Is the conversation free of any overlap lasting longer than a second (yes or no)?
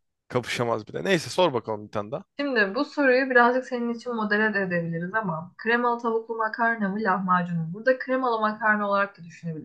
yes